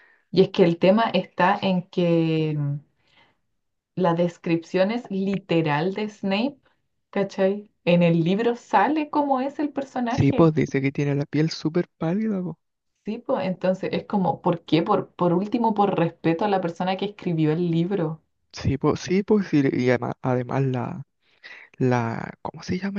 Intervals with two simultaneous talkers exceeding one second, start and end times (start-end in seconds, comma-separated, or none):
none